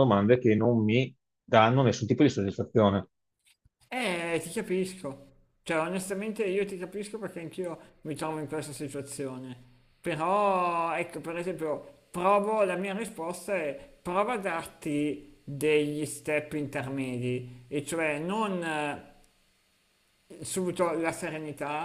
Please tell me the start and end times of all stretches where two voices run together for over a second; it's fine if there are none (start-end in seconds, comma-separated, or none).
none